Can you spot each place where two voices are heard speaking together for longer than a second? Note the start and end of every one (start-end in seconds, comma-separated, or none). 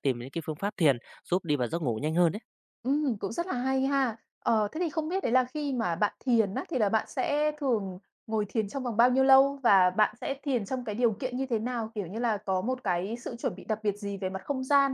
none